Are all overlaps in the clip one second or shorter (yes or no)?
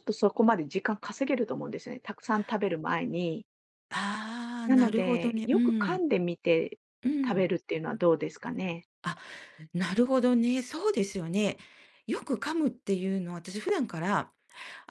no